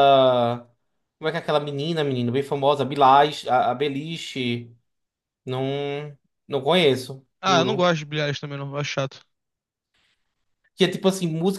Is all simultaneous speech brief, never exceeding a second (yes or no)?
yes